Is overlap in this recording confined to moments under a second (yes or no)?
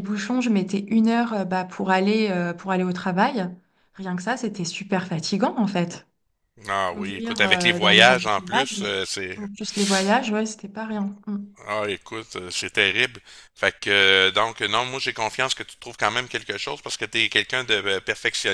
no